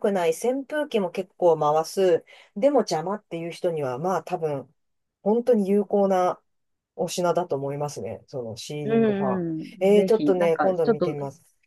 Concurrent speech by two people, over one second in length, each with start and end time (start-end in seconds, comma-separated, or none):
8.8-11.2